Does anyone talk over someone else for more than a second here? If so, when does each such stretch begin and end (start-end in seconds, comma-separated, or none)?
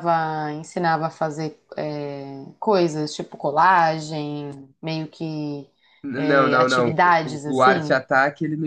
6.2-8.0